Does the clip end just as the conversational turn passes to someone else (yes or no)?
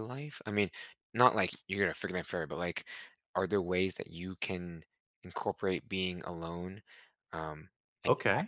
yes